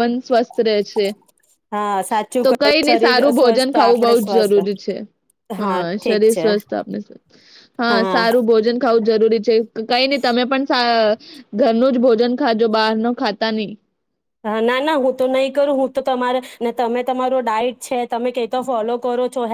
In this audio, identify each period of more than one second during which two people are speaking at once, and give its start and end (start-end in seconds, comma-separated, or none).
2.4-4.5